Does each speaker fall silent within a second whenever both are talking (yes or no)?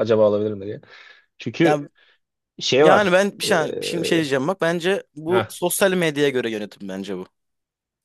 no